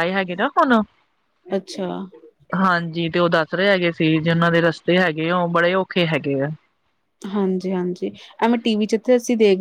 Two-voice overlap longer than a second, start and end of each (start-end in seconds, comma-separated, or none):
none